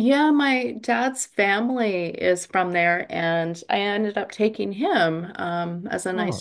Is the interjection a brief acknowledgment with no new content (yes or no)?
yes